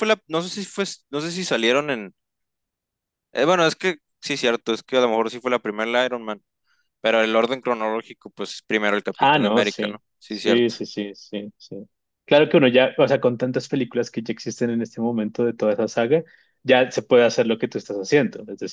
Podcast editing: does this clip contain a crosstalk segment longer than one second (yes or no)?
yes